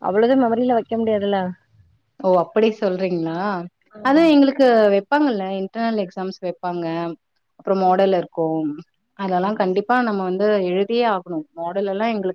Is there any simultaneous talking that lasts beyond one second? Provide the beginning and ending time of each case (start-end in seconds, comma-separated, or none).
none